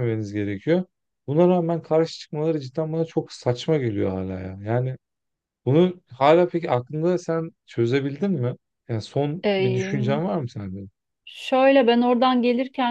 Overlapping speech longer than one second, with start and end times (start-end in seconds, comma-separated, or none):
none